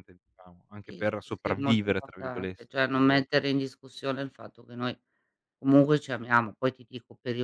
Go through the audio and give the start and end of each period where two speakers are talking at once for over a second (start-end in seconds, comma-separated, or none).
0.8-3.3